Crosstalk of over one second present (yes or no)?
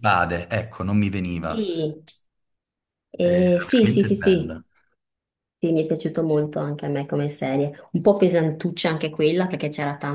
yes